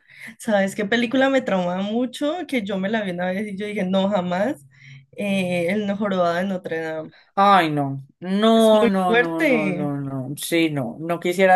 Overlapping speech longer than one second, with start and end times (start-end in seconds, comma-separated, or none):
8.5-9.9